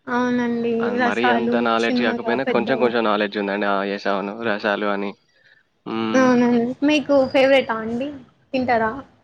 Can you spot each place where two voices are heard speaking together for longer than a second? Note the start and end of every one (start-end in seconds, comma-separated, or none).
1.1-2.9